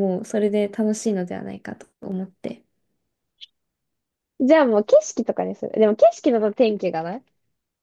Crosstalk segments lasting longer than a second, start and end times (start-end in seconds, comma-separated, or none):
none